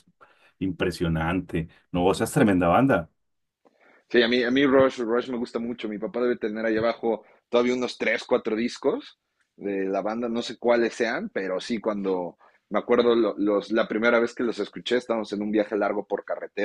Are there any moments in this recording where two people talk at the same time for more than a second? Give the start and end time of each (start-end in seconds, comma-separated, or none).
none